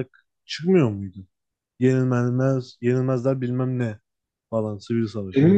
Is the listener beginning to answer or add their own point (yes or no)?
yes